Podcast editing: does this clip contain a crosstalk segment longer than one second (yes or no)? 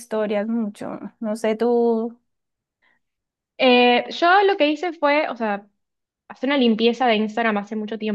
no